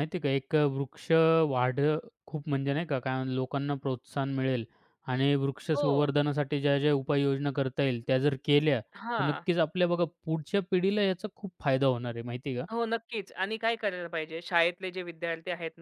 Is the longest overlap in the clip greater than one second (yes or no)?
no